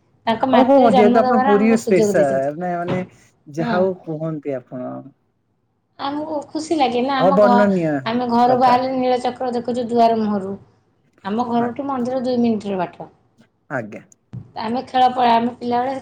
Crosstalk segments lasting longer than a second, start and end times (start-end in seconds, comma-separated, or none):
0.6-2.5